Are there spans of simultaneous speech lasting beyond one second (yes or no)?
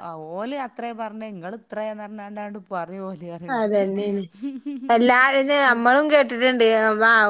no